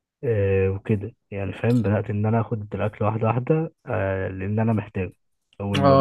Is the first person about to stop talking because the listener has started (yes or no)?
yes